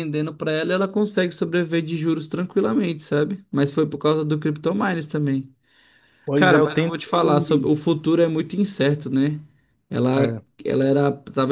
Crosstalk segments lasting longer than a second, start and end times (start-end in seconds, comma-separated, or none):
6.3-7.7